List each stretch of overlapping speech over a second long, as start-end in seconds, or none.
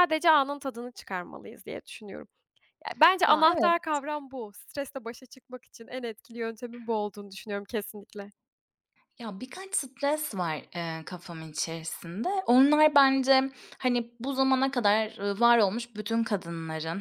none